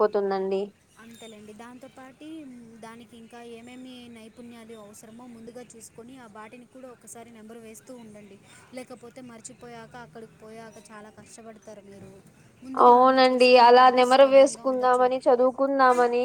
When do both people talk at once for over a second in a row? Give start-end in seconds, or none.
12.9-15.1